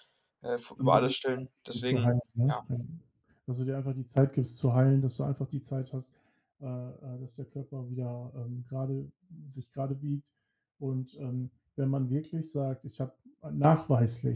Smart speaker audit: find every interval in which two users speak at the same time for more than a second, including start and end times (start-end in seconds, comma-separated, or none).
0.8-2.6